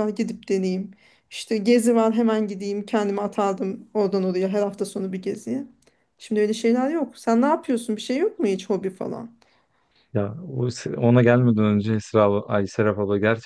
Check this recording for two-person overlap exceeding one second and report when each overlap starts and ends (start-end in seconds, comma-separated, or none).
none